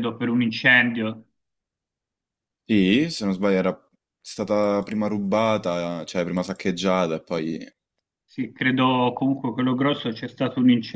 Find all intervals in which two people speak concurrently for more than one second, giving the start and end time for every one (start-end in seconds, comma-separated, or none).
none